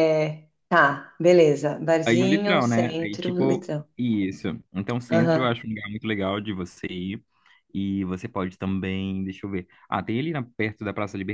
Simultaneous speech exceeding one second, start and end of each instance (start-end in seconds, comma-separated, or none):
2.0-3.9